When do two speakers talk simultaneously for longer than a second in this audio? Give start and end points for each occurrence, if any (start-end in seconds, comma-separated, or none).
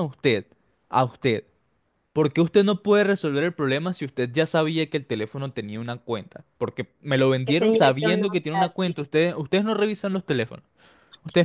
7.5-8.9